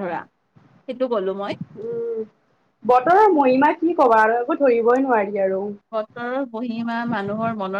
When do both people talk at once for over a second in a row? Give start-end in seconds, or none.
none